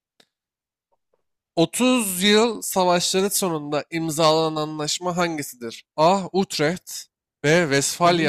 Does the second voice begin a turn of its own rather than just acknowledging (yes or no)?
no